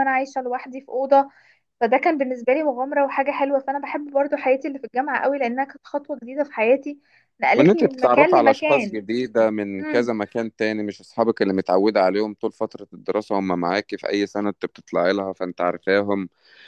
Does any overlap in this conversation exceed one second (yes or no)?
yes